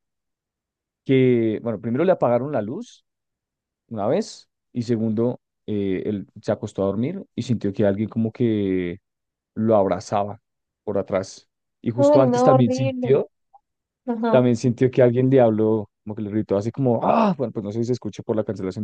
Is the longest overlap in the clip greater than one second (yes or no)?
yes